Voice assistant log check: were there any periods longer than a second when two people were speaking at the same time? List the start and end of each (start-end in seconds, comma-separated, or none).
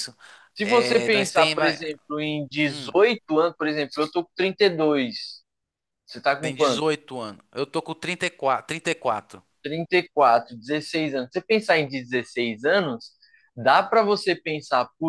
0.6-1.8